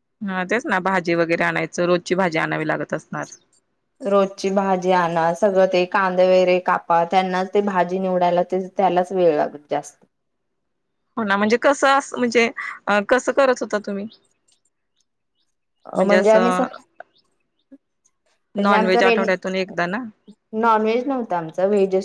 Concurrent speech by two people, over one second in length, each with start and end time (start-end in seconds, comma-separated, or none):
none